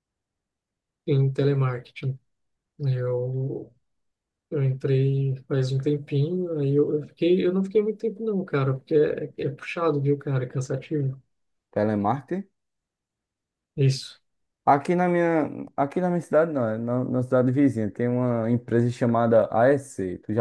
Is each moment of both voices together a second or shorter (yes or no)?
yes